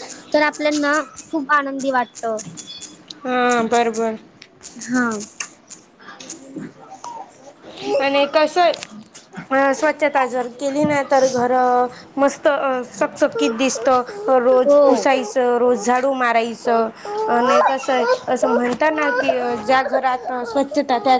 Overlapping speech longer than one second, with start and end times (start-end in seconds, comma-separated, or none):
none